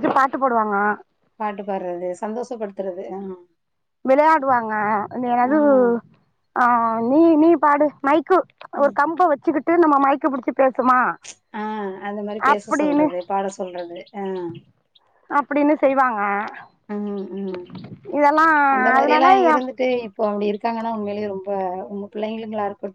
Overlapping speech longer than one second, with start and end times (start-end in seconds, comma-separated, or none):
none